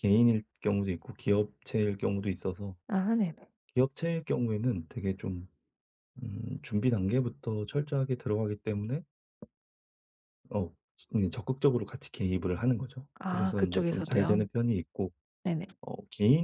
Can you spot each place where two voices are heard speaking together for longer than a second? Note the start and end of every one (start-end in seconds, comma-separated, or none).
13.2-14.5